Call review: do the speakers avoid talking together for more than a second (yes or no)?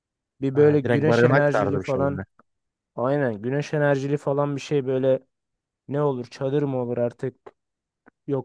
no